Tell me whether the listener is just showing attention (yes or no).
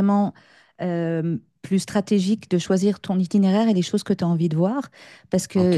yes